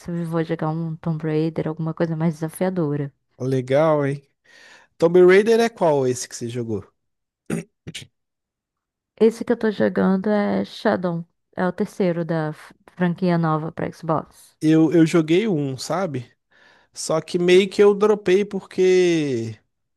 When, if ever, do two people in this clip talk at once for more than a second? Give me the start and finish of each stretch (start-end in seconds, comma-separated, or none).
none